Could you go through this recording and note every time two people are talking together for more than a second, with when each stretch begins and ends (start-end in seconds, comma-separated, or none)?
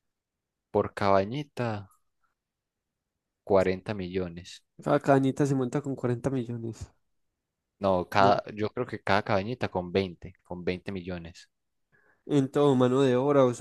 none